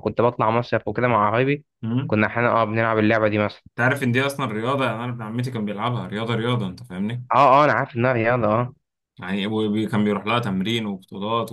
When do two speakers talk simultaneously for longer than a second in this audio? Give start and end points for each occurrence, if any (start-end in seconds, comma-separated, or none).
none